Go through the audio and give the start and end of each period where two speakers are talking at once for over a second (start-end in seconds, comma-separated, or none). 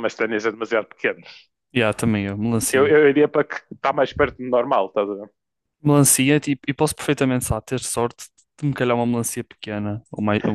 none